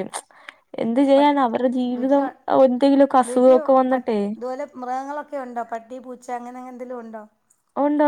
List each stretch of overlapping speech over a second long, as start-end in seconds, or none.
none